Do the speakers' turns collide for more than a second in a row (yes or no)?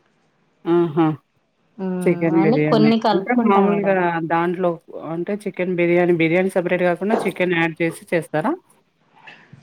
yes